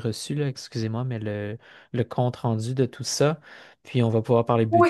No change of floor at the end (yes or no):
no